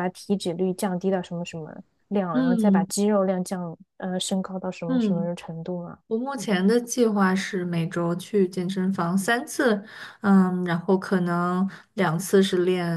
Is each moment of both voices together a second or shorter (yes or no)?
yes